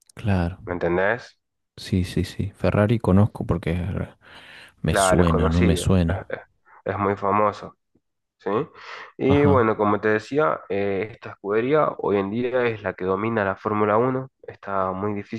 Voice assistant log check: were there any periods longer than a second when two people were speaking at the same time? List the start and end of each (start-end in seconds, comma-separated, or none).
4.8-6.2